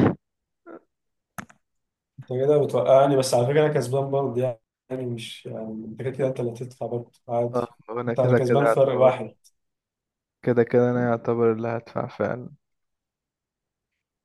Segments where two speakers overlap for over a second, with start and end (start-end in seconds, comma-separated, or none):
7.5-9.3